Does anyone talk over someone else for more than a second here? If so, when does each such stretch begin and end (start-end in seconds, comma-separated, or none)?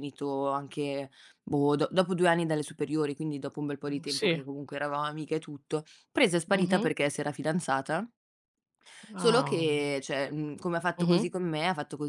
none